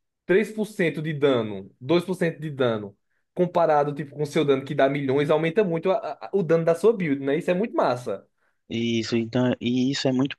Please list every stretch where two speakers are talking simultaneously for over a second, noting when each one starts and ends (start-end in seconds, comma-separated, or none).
none